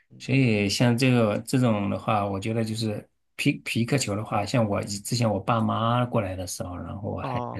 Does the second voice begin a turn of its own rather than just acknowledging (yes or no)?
no